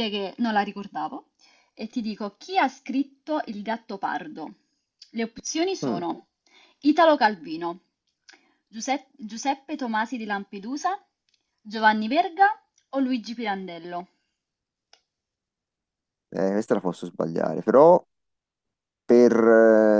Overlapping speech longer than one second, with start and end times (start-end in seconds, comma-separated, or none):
none